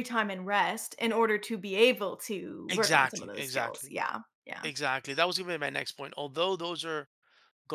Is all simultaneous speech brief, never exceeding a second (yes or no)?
no